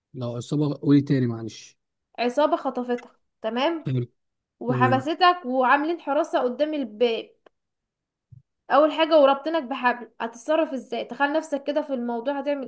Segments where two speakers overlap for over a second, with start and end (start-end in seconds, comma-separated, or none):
none